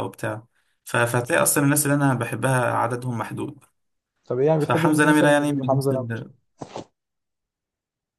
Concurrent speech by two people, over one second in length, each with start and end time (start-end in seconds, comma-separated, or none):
4.6-5.9